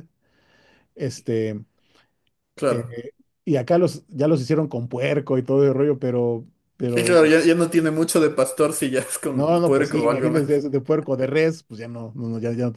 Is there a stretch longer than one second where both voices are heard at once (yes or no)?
yes